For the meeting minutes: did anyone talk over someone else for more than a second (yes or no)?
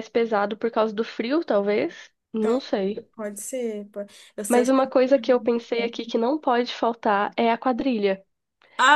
no